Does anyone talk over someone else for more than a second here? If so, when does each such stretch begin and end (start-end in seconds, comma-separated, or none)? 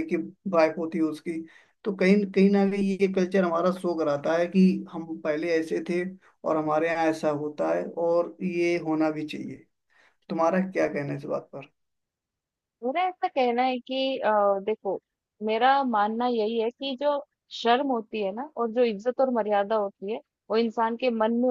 none